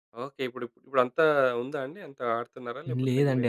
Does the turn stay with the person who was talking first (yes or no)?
no